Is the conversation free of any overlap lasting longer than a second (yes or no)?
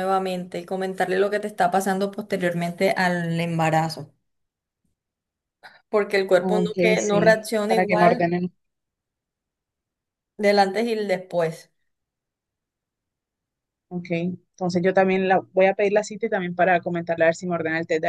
no